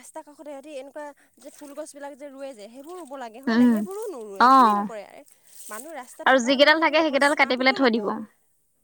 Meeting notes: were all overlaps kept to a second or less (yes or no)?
no